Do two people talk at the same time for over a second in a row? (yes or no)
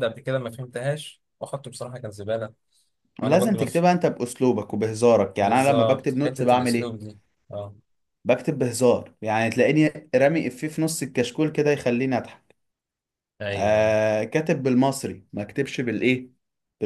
yes